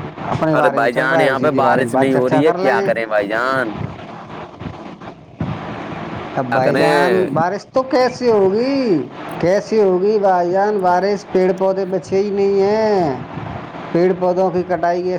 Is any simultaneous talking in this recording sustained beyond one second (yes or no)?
yes